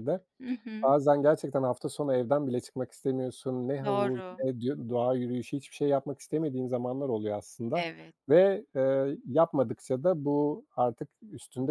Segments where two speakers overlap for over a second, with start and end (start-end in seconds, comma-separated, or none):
none